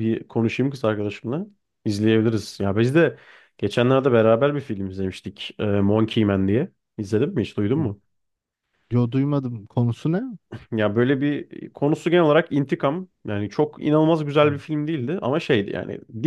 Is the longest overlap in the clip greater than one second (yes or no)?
no